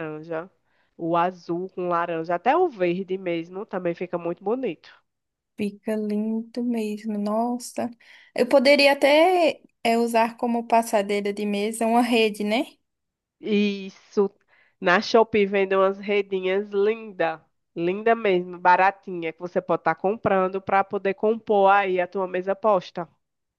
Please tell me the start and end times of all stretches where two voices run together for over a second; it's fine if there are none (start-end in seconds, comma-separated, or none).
none